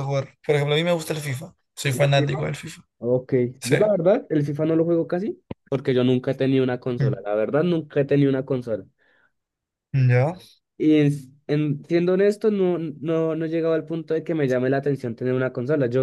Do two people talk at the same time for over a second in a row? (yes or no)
no